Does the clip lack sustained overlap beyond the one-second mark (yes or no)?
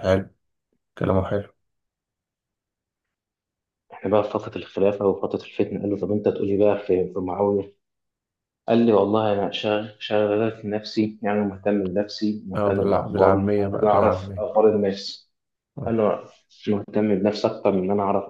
no